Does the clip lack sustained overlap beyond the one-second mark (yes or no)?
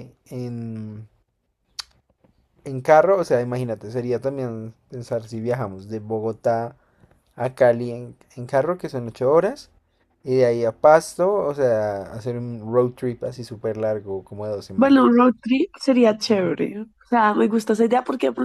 yes